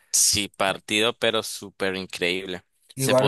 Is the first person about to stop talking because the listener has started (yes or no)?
no